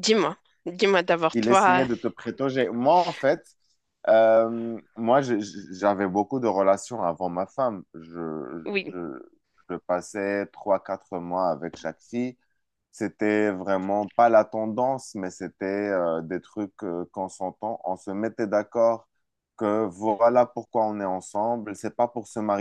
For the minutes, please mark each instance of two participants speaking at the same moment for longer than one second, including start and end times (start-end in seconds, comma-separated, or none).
none